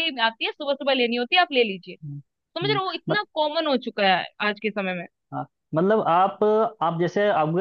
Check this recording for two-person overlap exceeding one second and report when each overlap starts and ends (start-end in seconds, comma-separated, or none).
none